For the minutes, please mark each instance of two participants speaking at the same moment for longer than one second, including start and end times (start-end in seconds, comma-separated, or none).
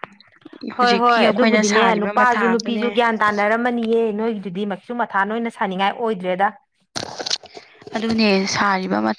0.8-2.9